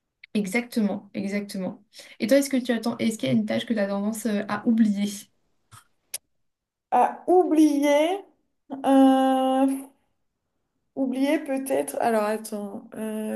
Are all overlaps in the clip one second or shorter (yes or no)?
yes